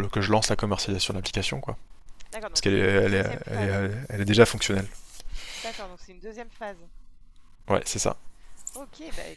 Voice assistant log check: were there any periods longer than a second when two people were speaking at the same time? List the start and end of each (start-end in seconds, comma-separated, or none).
2.5-3.9